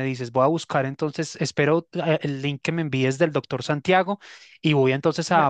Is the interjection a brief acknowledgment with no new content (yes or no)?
yes